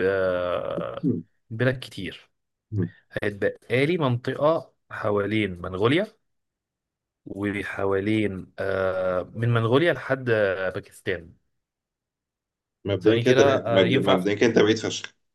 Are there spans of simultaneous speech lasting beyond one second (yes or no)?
yes